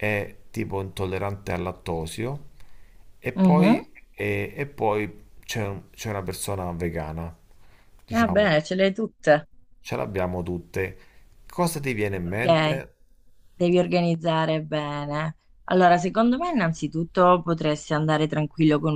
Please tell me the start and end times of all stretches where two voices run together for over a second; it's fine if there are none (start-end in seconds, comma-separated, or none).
none